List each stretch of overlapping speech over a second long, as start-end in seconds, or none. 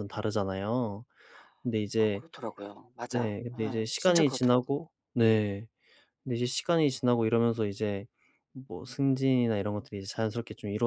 3.1-4.8